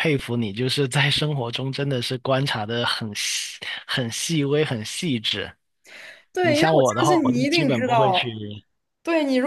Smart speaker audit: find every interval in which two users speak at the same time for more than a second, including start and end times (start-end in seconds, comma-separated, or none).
6.4-8.3